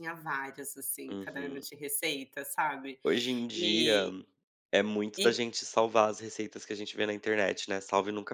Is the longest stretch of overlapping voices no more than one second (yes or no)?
yes